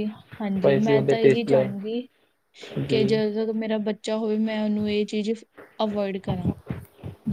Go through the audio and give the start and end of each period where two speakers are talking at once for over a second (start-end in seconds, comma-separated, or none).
0.5-1.9